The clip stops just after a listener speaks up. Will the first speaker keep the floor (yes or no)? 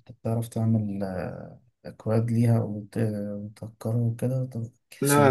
no